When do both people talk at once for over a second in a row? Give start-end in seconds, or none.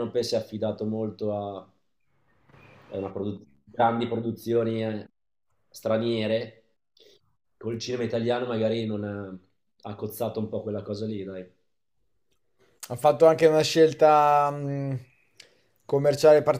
none